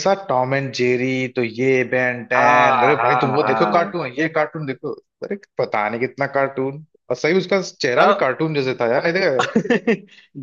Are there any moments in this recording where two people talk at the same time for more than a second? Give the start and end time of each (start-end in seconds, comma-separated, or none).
2.4-3.9